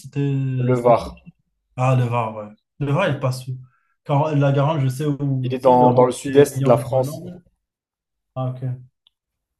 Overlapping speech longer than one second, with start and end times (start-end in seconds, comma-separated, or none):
5.4-7.2